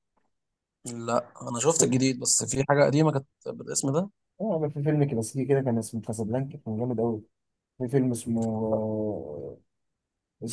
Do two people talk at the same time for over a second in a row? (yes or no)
no